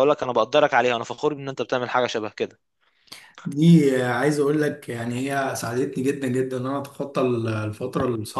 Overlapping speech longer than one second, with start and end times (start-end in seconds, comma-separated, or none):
none